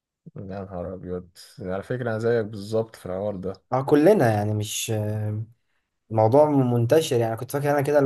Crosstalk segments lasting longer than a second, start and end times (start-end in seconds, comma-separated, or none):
none